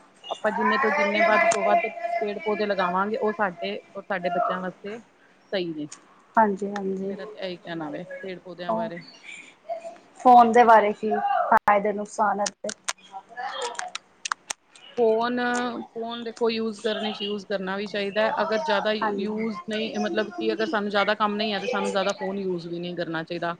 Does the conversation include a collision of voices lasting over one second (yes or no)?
no